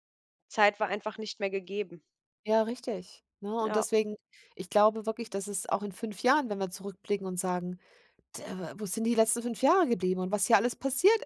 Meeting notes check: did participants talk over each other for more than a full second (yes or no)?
no